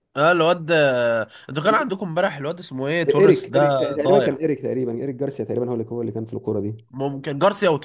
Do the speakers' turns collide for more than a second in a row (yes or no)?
yes